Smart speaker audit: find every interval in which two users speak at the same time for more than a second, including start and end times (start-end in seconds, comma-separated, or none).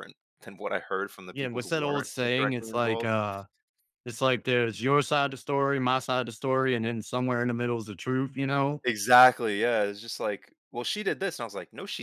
1.3-3.1